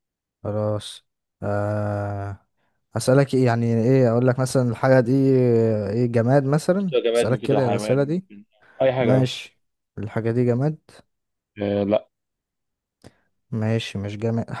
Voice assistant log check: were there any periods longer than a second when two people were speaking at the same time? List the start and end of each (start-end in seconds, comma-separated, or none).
6.8-8.3